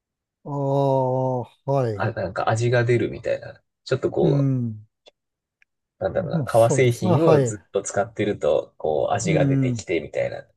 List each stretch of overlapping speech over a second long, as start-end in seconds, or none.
6.2-7.6